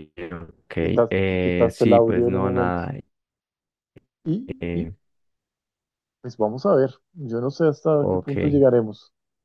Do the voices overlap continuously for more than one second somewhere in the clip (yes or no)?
yes